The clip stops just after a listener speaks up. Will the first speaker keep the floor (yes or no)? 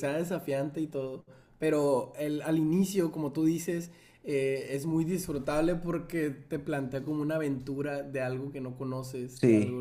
yes